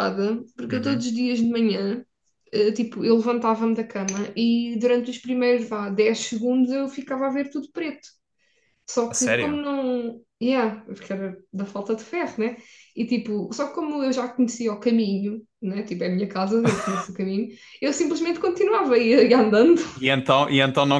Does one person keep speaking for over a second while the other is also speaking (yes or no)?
no